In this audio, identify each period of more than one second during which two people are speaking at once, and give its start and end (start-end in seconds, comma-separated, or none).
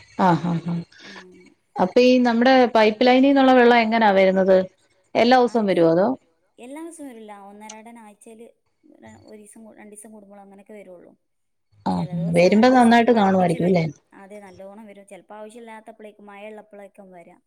11.9-13.8